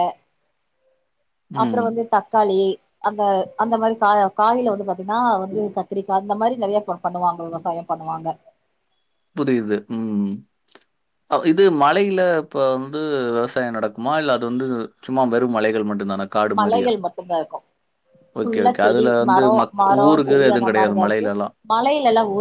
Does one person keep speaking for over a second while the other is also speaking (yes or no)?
yes